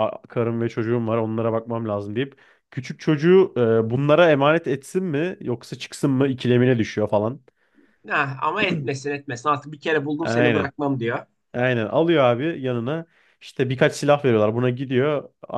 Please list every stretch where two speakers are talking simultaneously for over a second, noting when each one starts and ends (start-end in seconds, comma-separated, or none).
none